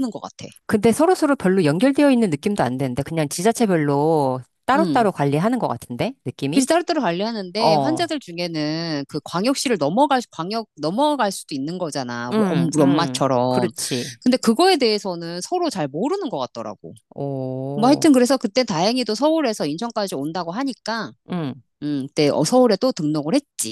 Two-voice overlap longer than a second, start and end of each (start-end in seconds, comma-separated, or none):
12.3-13.7